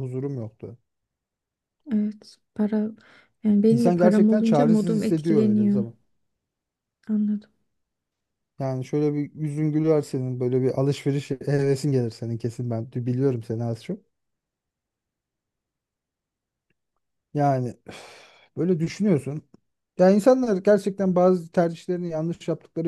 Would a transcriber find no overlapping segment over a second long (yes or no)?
no